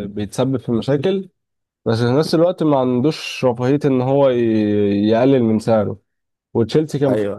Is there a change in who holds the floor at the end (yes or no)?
no